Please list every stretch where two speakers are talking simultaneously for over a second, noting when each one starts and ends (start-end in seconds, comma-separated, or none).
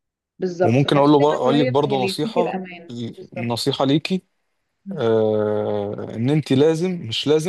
0.6-2.6